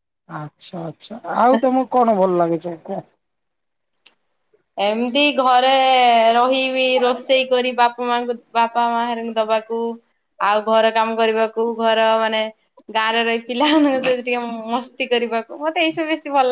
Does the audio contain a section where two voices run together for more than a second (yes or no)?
no